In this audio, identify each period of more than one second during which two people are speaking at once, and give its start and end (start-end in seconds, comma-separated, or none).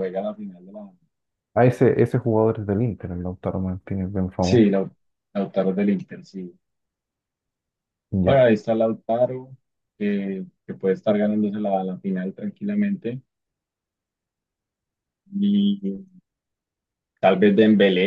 none